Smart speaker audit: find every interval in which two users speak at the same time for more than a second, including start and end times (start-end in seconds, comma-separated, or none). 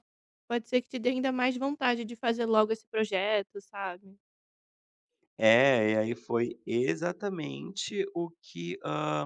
none